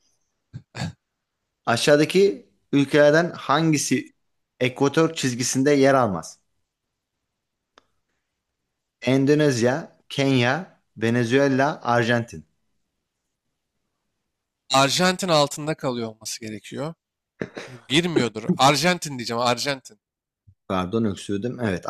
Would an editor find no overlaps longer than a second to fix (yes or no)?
yes